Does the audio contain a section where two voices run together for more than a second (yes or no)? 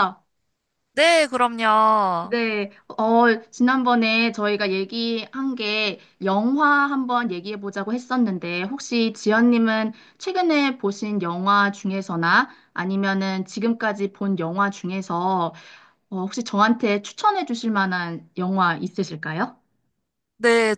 no